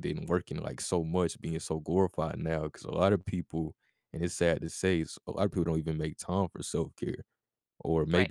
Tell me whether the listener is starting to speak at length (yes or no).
no